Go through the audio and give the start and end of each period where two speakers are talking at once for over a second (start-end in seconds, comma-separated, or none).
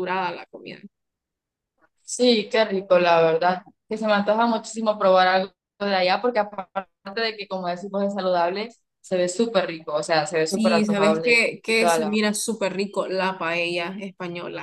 10.5-12.2